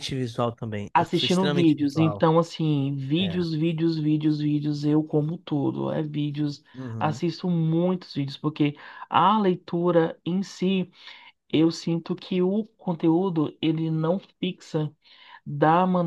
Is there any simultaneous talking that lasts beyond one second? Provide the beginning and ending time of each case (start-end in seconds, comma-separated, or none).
0.9-2.2